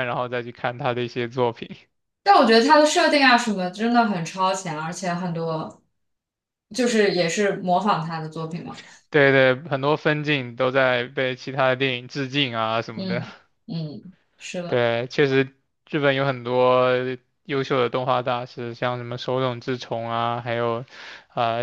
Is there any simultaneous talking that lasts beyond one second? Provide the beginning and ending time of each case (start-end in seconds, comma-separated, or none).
none